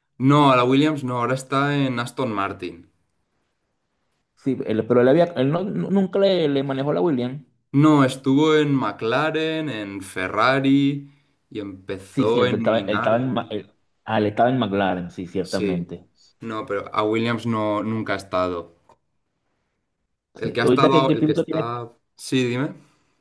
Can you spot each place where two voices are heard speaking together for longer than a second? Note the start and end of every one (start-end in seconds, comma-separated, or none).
12.1-13.5, 20.4-21.7